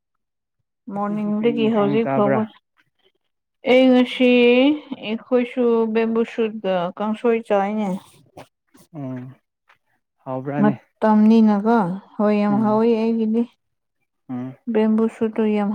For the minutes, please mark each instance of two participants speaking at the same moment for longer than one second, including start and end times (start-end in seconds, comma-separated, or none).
0.9-2.4